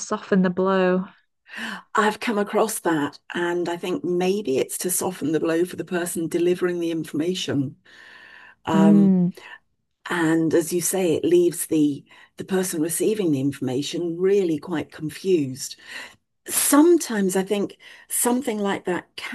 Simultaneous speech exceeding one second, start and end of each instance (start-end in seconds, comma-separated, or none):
none